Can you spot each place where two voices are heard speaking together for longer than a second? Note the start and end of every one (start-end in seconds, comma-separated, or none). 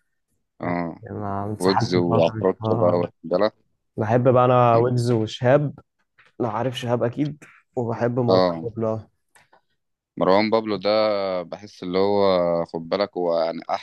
1.6-3.1